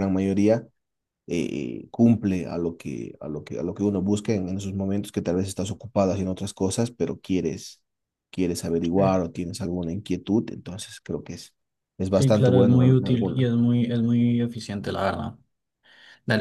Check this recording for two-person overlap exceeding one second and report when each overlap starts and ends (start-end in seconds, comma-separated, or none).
12.1-13.5